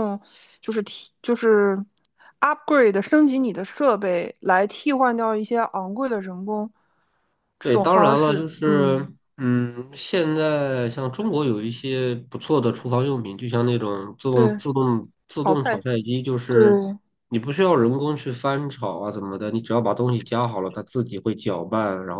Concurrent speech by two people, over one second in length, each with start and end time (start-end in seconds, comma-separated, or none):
7.6-9.2